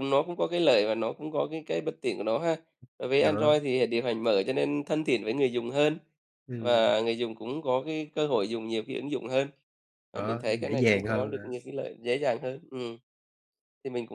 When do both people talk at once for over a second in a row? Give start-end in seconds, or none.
10.1-11.6